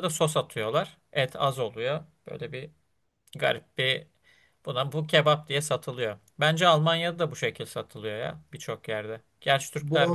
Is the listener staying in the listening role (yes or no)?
no